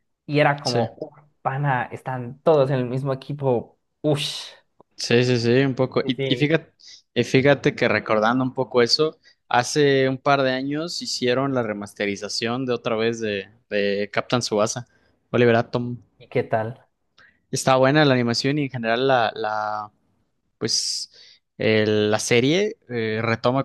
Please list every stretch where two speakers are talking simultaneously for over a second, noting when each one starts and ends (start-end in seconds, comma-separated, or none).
none